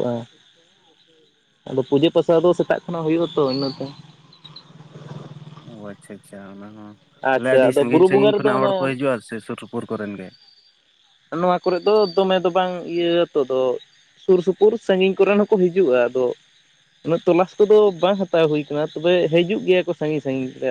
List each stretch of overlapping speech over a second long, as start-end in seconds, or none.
7.3-8.9